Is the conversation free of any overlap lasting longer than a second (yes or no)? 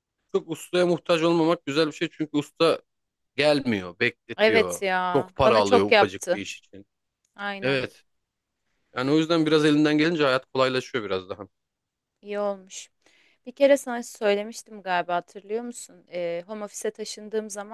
no